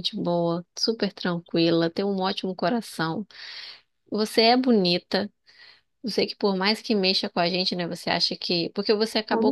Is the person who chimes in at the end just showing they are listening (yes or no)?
yes